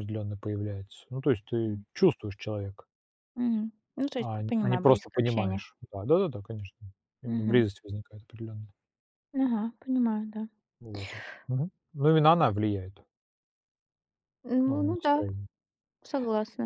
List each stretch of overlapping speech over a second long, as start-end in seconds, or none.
4.2-5.6